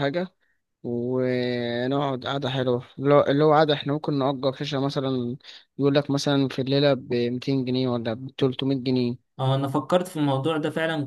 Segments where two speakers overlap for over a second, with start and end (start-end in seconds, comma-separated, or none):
none